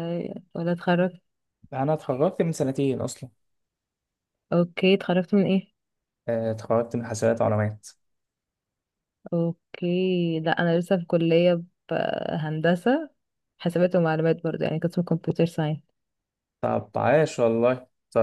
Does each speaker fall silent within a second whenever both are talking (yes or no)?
yes